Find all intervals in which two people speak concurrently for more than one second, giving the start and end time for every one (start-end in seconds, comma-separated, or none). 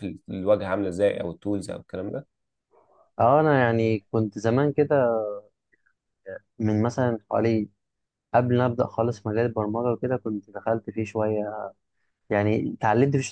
none